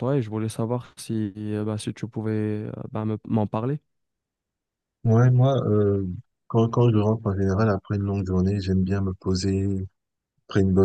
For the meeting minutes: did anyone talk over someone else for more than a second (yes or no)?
no